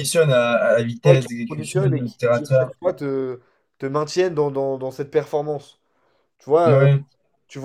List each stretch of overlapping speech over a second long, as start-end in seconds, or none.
1.0-2.7